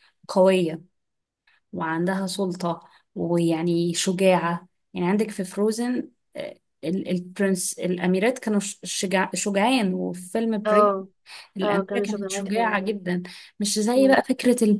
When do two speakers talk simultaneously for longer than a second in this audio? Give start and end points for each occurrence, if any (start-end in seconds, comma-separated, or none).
11.6-13.0